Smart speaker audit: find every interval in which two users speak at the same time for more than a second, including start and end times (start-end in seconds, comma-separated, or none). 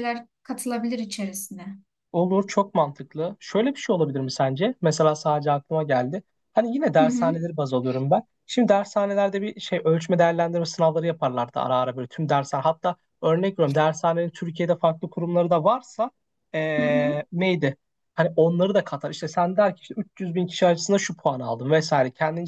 none